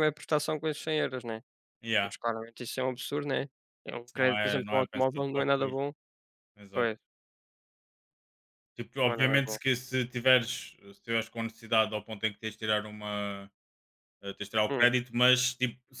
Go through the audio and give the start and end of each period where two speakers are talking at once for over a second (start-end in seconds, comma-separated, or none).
4.0-5.8